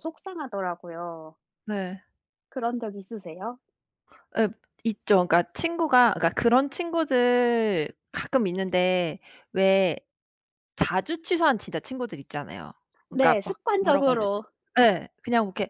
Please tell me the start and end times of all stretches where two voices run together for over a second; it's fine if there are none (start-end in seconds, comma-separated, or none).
13.1-14.4